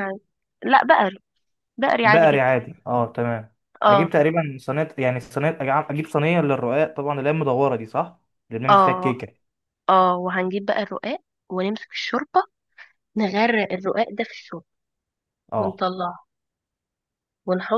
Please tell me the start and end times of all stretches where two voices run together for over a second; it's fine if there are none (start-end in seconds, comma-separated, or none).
none